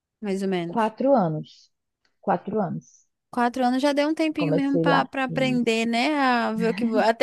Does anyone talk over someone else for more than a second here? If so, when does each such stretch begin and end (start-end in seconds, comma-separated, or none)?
4.4-5.7